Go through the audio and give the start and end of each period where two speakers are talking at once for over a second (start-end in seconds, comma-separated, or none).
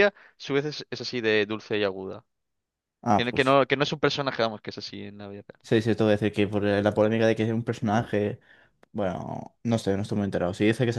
none